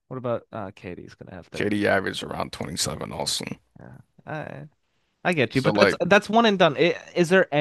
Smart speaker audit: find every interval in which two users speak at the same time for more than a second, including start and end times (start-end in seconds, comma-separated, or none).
none